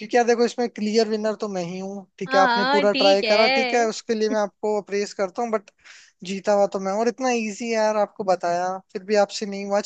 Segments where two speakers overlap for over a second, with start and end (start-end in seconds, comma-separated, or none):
2.2-3.9